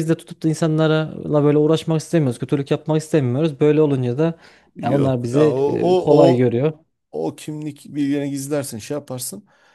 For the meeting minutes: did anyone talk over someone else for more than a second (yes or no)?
yes